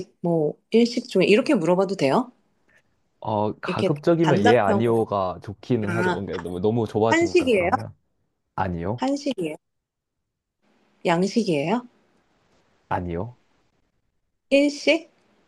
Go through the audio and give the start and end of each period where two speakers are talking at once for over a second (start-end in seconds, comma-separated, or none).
3.7-5.0